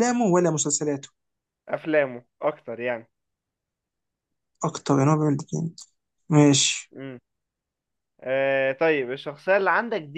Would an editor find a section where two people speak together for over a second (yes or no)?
no